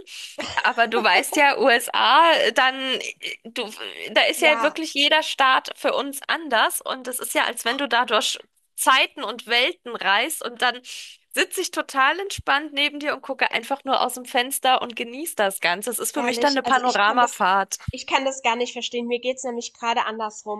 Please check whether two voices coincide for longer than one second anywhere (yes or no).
yes